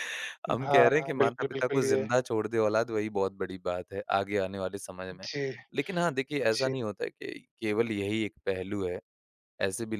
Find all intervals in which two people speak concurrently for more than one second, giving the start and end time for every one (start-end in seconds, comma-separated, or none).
0.6-2.0